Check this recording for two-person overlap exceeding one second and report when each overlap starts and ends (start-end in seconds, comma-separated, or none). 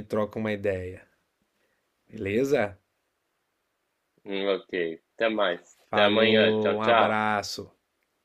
5.9-7.3